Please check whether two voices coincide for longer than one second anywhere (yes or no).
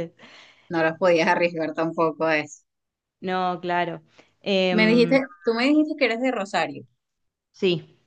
no